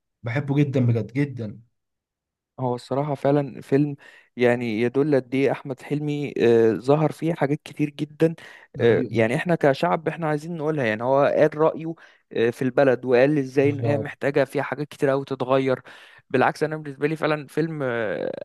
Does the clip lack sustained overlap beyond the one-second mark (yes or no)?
yes